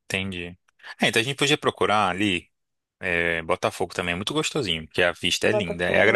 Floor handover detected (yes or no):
no